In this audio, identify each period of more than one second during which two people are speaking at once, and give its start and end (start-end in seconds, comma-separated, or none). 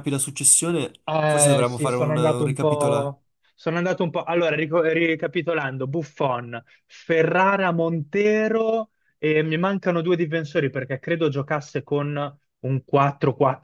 1.1-3.1